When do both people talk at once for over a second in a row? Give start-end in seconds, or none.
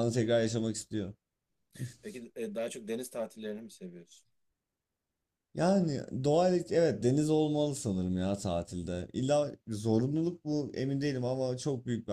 none